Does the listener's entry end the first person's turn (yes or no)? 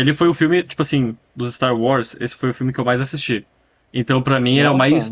no